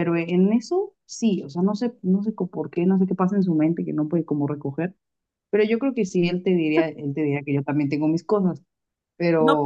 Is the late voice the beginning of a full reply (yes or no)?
yes